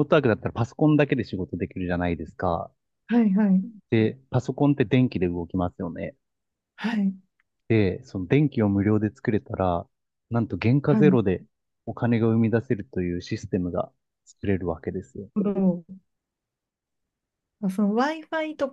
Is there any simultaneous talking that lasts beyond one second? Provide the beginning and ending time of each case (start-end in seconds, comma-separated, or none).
none